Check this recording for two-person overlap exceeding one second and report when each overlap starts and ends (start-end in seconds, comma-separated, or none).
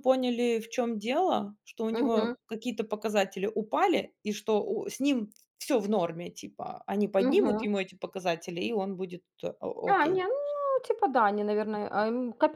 none